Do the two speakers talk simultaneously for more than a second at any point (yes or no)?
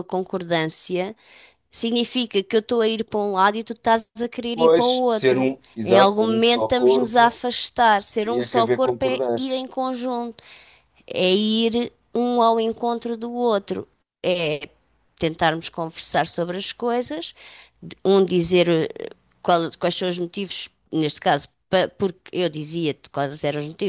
yes